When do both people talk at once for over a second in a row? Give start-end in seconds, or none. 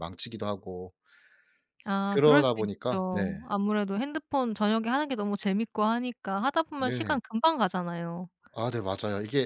2.1-3.4